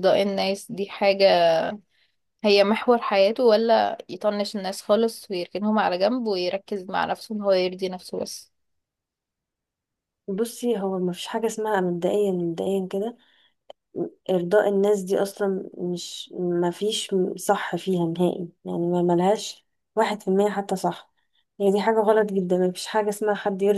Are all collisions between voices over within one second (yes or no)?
yes